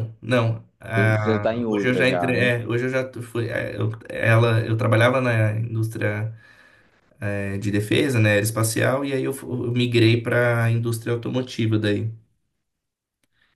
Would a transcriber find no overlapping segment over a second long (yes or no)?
no